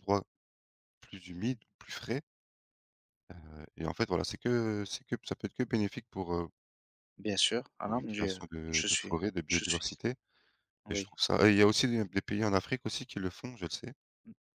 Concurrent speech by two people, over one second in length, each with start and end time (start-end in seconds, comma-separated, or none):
7.8-9.9